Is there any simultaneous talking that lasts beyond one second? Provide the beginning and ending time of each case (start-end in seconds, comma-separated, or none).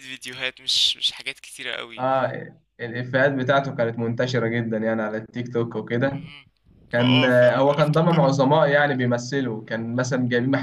7.0-8.3